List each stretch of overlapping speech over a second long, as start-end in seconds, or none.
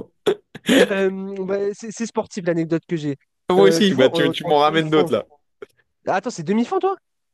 3.6-5.1